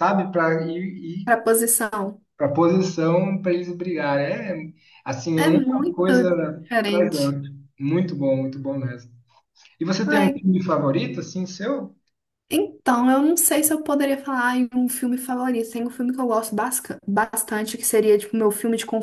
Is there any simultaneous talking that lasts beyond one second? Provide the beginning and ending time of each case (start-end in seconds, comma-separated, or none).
5.3-7.4